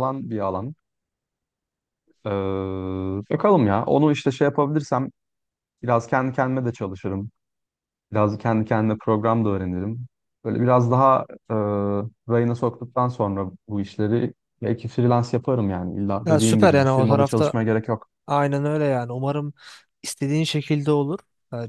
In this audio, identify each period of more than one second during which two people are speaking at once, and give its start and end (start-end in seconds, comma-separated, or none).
16.2-17.5